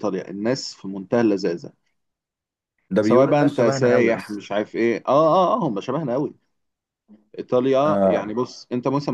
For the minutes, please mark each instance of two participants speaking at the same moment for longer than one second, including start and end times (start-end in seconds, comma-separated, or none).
3.0-4.5